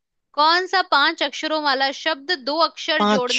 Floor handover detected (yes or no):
no